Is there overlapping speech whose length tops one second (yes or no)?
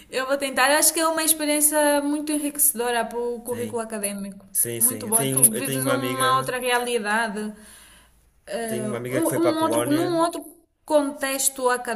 yes